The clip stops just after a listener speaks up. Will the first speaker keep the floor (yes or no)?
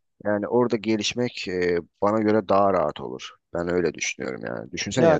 yes